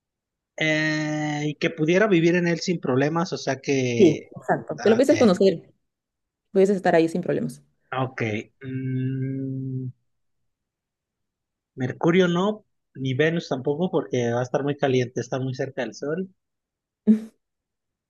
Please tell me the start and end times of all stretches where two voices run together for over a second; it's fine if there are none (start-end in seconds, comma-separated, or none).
none